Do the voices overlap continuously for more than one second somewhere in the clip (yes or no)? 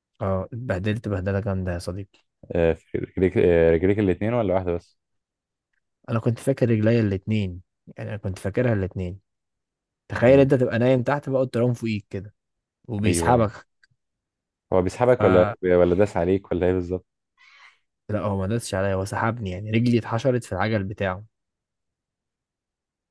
no